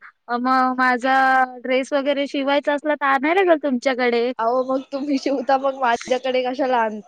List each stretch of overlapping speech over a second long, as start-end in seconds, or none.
none